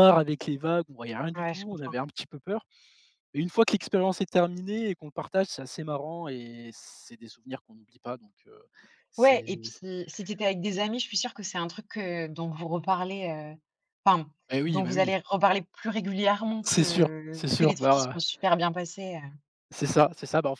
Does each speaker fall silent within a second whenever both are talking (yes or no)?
no